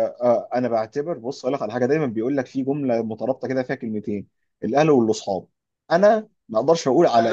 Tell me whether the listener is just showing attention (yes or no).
yes